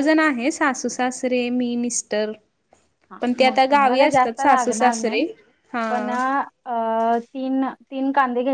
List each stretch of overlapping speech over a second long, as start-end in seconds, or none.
3.2-5.2